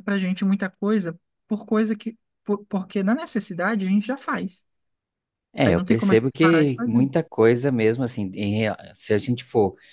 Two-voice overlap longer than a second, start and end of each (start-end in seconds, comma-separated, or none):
5.6-7.1